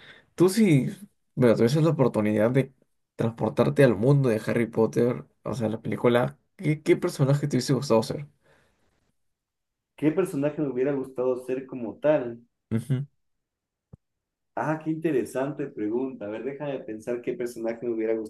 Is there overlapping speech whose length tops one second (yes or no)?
no